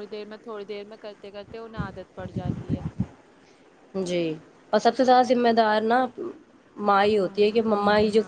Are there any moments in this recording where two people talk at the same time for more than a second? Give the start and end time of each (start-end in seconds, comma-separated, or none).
none